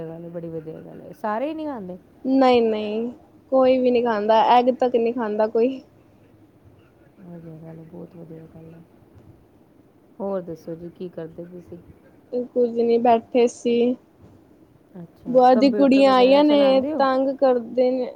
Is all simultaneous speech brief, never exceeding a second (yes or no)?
no